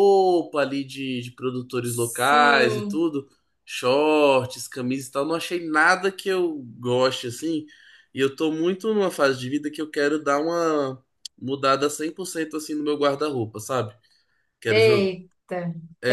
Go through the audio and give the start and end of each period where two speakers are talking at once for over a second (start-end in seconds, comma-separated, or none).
1.8-3.0